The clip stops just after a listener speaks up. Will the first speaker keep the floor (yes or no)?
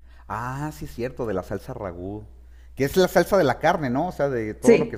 yes